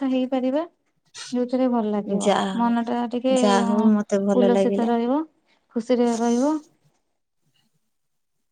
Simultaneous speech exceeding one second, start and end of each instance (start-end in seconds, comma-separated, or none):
none